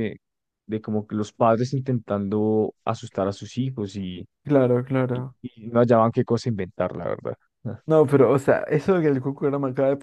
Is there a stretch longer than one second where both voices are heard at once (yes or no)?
no